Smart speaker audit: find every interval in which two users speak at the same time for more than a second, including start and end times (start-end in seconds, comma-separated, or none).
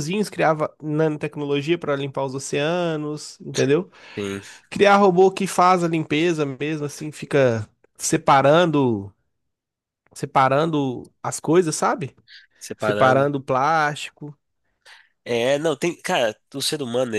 none